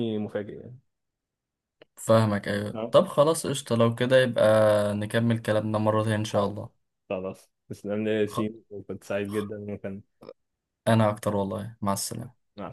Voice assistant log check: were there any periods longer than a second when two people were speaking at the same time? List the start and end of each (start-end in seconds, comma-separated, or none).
none